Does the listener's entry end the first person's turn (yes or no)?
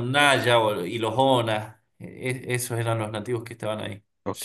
yes